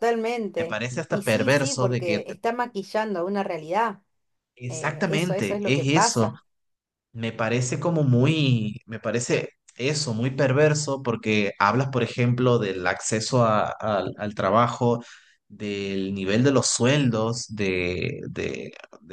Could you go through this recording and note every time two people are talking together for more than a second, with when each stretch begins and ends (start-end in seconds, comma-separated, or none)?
0.6-2.2, 4.7-6.3